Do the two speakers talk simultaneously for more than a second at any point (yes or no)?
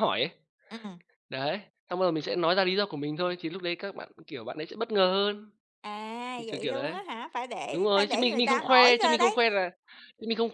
yes